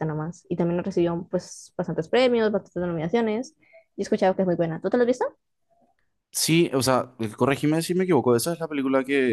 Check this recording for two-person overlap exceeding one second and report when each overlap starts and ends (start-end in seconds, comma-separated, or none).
none